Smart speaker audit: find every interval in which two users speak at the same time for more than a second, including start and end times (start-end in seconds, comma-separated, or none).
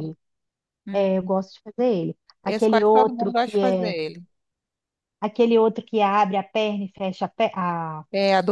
2.4-3.9